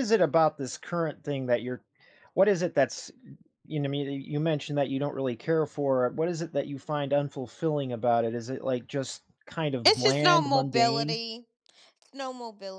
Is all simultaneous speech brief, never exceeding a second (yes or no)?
no